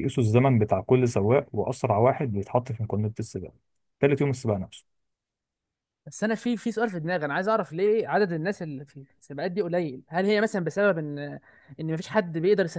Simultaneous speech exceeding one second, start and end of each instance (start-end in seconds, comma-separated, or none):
none